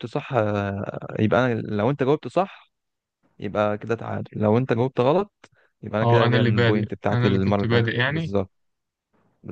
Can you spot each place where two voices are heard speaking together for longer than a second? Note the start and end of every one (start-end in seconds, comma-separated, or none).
6.0-8.3